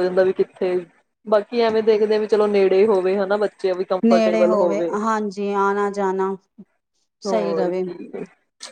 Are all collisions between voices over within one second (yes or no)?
yes